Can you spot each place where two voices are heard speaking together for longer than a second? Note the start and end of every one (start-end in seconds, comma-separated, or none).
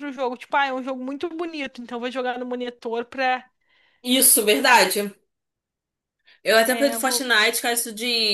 none